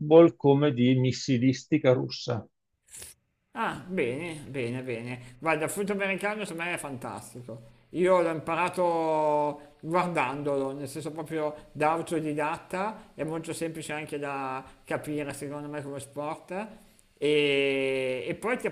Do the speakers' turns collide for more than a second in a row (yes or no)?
no